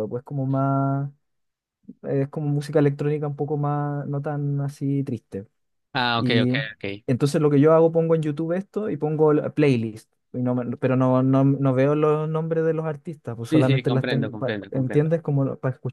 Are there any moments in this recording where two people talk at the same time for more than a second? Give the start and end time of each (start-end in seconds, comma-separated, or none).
13.5-15.1